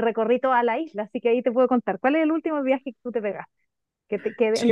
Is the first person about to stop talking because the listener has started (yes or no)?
yes